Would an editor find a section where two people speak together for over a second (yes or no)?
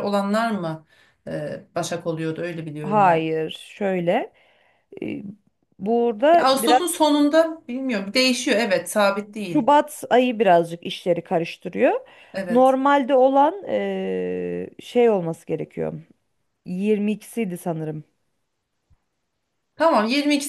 no